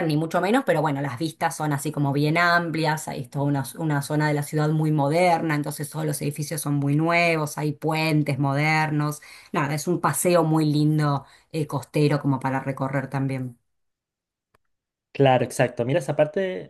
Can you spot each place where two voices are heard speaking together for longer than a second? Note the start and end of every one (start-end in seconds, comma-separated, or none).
none